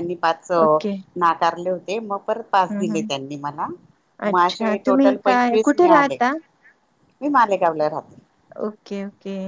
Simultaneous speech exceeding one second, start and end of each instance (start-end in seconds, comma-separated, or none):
4.3-6.2